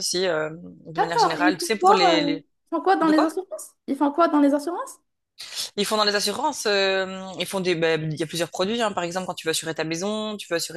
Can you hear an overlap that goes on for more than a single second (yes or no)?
yes